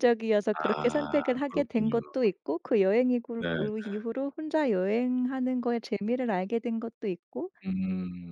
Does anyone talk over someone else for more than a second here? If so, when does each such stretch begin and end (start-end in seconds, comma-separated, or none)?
0.5-2.0